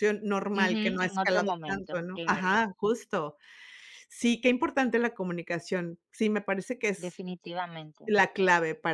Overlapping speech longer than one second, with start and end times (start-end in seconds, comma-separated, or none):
0.6-2.5